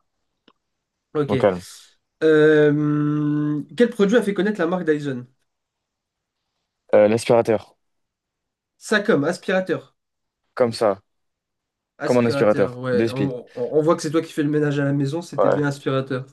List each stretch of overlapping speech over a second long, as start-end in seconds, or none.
12.0-13.3